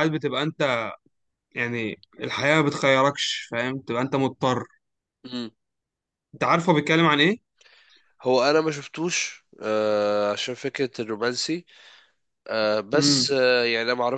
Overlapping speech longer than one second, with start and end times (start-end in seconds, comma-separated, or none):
none